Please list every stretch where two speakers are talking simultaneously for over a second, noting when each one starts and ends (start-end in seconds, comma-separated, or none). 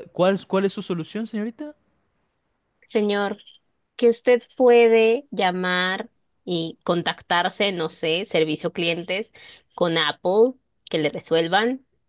none